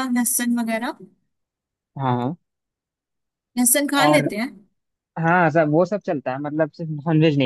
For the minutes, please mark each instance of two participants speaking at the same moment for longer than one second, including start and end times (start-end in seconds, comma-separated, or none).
none